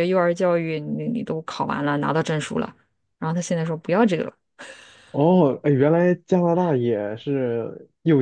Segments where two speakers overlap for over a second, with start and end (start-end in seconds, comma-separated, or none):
none